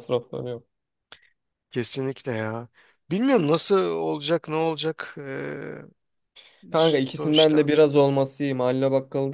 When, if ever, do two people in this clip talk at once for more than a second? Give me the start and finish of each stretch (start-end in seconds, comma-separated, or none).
none